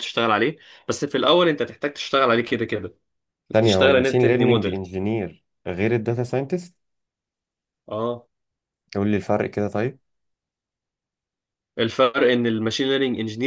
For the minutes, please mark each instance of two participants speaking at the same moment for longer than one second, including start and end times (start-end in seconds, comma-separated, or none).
3.6-4.8